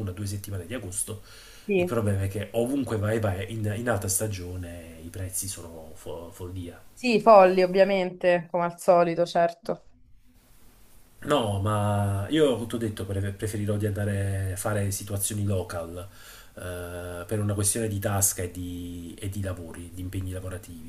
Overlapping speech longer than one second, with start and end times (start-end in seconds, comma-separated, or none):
none